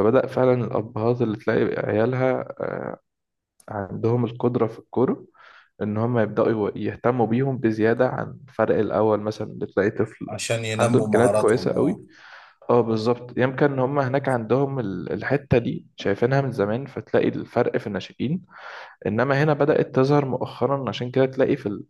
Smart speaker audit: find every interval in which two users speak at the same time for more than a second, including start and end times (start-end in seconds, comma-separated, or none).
10.8-12.0